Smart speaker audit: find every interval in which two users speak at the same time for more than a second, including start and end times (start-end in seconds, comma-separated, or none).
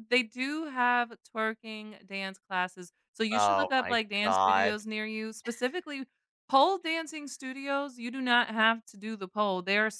3.3-4.8